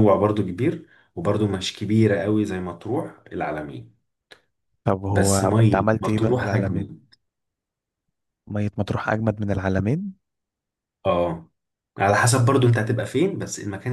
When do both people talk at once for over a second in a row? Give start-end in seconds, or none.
5.1-6.9